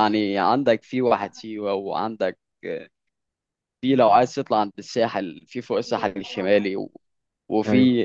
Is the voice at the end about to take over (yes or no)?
no